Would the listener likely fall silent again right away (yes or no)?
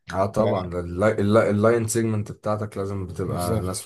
yes